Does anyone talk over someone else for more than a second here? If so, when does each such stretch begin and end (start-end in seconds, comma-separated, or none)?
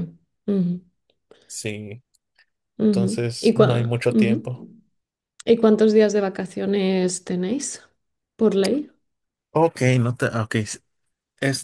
2.9-4.5